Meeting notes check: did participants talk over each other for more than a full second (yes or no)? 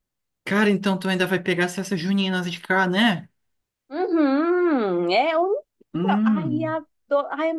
no